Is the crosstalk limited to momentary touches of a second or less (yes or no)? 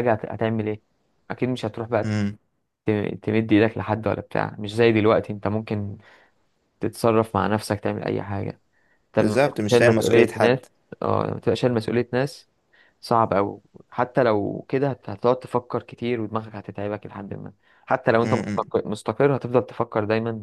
no